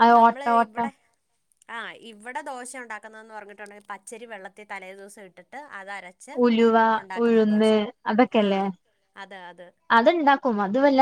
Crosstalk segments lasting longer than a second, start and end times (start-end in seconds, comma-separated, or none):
none